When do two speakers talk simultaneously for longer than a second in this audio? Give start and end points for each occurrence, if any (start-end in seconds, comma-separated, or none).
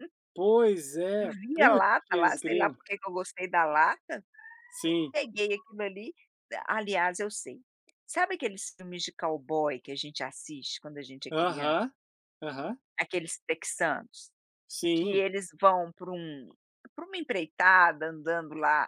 1.2-2.8